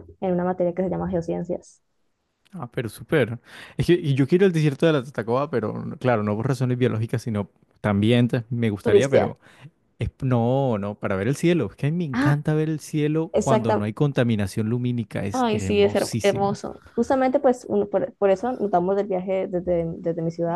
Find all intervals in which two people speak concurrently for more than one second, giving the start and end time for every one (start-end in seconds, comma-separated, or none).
15.3-16.6